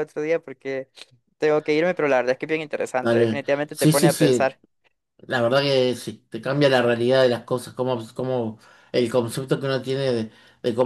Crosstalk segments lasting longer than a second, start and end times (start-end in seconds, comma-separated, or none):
3.0-4.6